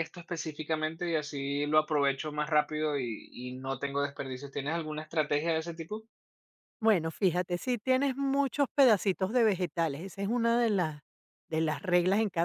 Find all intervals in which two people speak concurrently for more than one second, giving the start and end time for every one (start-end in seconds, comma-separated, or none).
none